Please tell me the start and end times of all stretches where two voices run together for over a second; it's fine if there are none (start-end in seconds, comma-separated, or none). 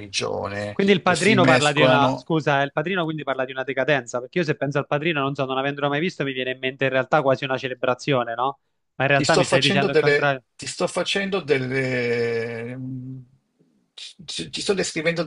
0.7-2.3, 9.1-10.4